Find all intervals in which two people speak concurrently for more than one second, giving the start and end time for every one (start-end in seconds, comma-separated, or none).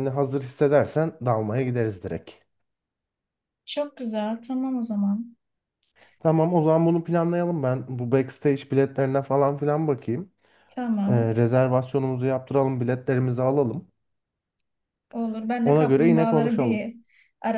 15.6-16.9